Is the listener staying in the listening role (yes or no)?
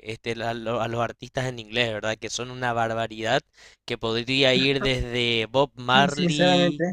yes